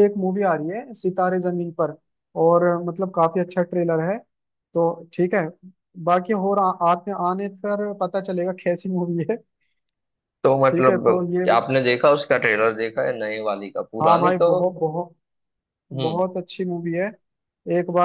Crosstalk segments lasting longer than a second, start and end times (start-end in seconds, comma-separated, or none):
none